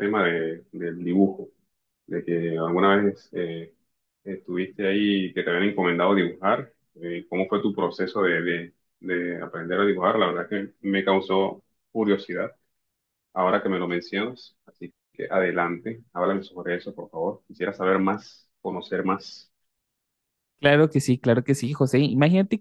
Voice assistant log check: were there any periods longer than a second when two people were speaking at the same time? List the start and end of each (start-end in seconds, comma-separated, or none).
none